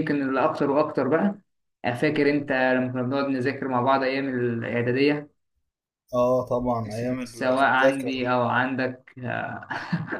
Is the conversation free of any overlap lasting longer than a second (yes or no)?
no